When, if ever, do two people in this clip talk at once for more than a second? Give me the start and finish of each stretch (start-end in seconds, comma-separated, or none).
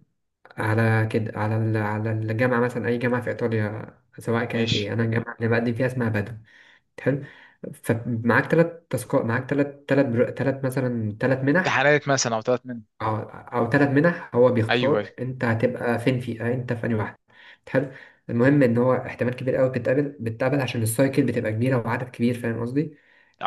none